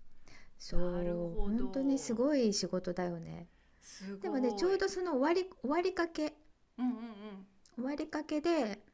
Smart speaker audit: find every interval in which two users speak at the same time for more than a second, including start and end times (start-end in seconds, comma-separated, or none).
0.7-2.2